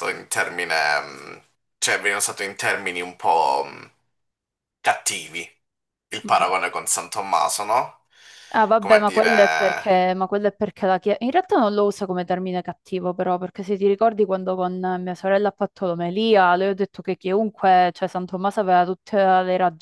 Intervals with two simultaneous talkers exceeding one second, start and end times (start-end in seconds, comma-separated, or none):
8.8-10.0